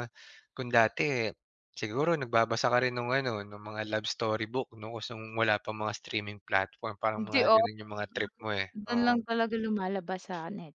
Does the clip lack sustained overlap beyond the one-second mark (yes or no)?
yes